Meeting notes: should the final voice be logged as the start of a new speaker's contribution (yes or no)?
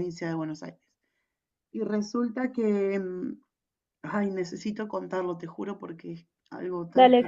yes